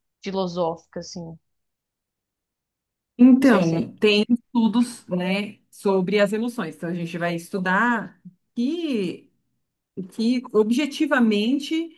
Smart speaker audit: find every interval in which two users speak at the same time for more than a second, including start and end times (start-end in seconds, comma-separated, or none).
none